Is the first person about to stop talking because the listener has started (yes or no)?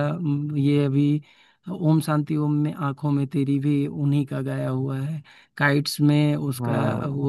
no